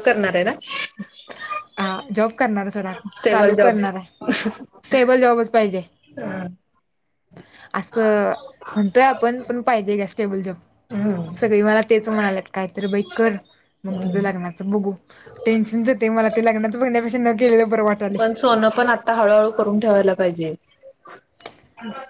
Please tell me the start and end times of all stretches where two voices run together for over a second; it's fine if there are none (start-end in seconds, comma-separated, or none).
none